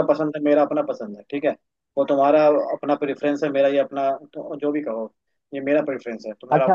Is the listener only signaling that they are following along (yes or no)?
no